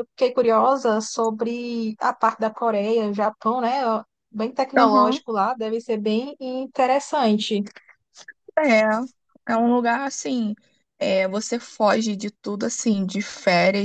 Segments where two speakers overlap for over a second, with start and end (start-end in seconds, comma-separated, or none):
none